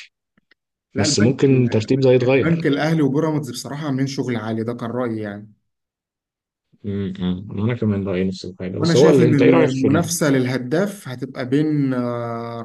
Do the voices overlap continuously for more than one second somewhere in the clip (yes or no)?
yes